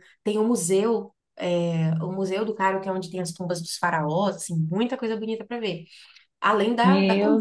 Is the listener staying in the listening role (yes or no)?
no